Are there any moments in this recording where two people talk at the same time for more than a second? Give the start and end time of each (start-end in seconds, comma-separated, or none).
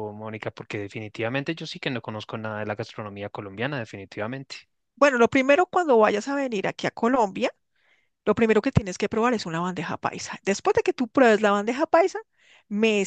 none